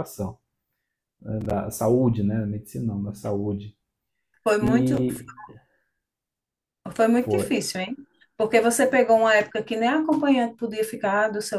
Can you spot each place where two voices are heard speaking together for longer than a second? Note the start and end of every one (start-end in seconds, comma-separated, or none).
none